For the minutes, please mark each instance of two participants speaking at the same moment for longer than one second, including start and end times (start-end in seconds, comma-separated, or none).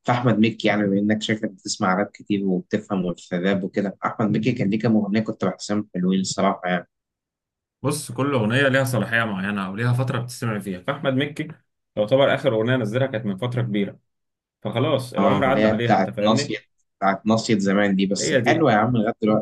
15.2-16.6